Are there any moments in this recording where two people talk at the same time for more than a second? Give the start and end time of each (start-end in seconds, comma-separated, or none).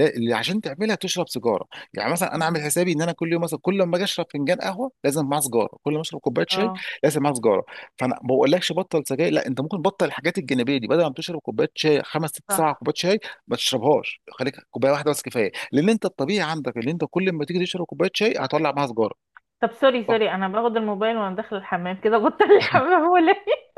none